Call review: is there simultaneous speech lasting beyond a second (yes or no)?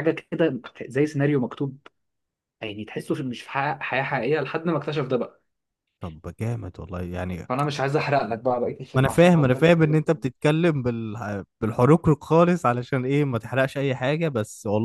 yes